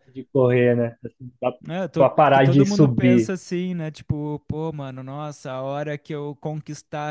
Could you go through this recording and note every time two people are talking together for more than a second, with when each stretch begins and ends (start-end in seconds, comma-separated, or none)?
2.0-3.3